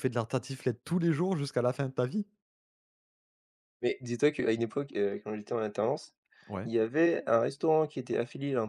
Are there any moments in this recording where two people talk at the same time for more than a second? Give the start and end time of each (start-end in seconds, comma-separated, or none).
none